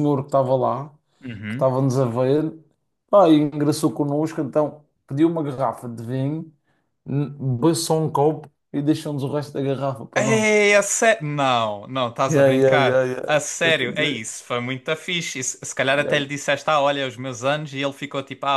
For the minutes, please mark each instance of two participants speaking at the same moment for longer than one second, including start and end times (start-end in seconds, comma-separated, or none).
12.3-14.2